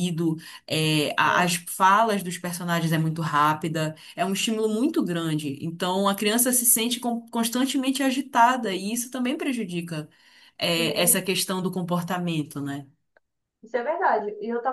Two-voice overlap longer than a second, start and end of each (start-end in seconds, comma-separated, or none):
none